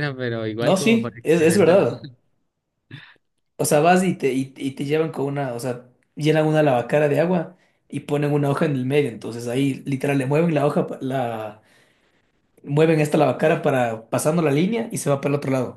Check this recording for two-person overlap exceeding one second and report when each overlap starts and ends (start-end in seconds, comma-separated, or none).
0.6-1.8